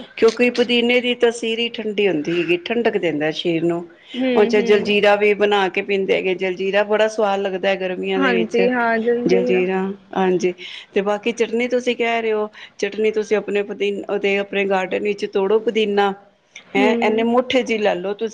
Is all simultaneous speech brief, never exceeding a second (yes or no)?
yes